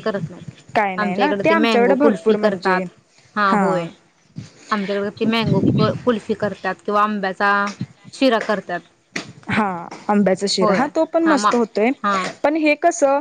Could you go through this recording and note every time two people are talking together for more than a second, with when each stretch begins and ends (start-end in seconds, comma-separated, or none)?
1.0-2.8